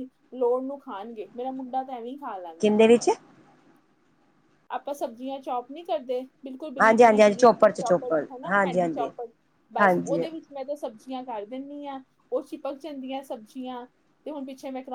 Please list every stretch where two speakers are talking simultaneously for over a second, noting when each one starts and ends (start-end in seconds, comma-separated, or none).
6.8-9.1